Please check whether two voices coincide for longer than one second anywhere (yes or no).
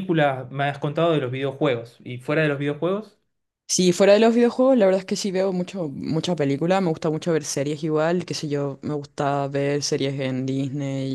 no